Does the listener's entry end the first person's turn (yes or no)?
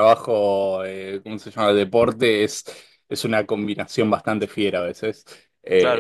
yes